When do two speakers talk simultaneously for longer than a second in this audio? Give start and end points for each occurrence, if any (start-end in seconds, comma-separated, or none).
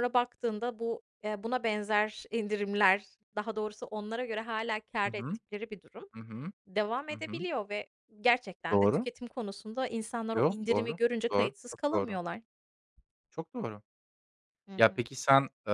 10.3-12.2